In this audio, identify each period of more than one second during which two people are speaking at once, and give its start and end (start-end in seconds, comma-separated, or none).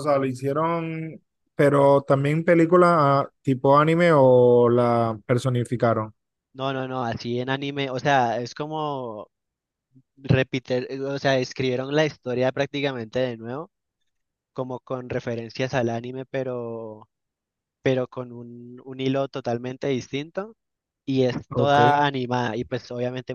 none